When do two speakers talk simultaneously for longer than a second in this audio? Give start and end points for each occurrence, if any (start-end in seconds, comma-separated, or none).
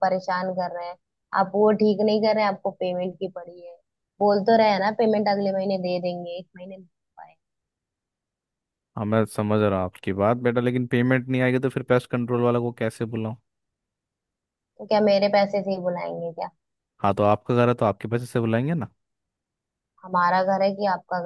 none